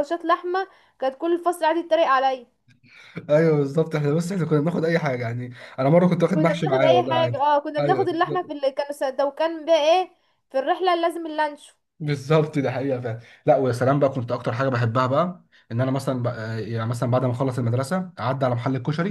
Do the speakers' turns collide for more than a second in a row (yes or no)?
yes